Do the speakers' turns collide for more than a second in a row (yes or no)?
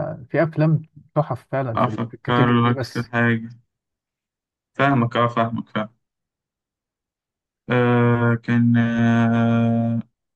yes